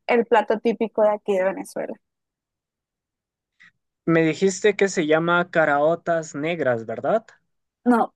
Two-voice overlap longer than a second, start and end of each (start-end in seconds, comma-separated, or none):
none